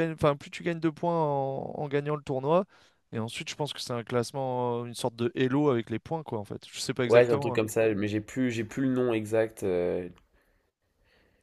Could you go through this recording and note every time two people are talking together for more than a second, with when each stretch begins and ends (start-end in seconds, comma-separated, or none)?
none